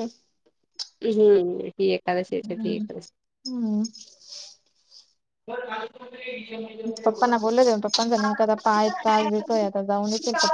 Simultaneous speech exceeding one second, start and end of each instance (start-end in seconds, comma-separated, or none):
none